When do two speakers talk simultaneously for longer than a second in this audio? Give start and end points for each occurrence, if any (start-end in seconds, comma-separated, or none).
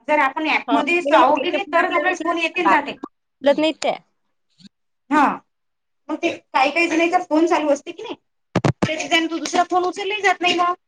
0.7-3.0